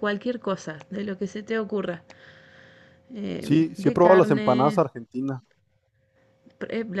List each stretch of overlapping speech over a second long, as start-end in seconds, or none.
3.4-4.8